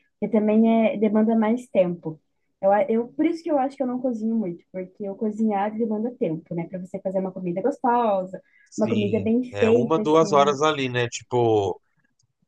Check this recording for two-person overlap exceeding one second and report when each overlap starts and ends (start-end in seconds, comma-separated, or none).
8.7-10.6